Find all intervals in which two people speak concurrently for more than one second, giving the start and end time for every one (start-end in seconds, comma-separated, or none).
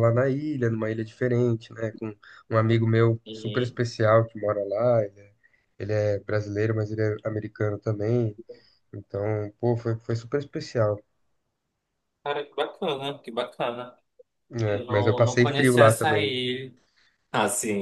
14.7-16.4